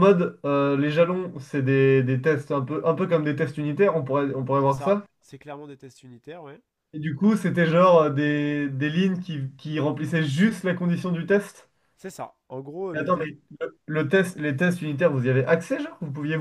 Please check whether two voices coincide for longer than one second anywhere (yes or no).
no